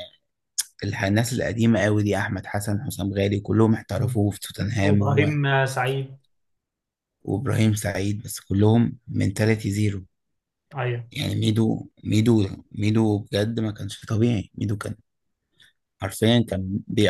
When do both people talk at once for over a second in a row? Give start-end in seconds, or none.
none